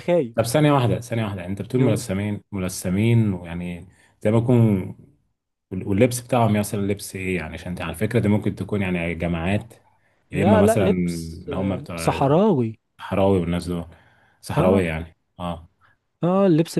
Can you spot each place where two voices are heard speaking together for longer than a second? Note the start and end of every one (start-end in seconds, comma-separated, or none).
10.3-12.2